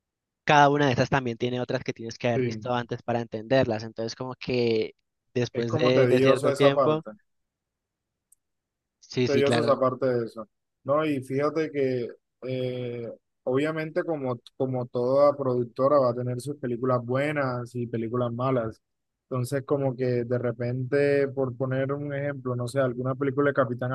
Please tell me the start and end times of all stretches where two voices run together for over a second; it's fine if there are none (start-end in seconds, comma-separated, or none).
5.5-7.0